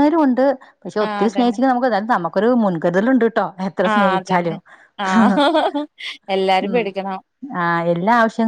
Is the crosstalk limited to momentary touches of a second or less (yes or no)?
yes